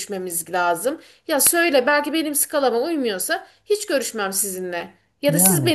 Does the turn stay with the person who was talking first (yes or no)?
yes